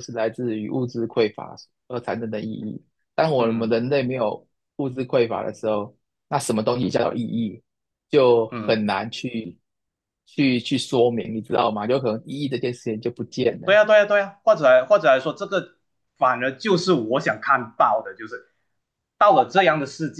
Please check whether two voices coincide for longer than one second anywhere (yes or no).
no